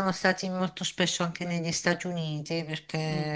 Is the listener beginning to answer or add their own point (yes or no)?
no